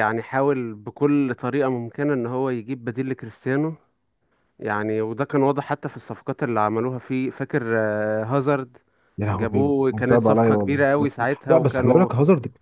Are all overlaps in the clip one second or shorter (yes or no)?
no